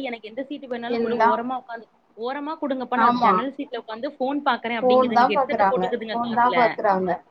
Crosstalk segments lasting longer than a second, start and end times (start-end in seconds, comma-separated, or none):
4.8-6.6